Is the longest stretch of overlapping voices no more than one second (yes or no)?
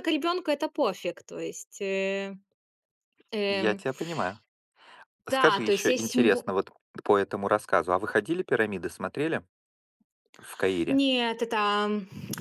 no